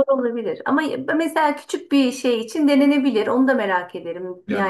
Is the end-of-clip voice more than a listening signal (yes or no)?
yes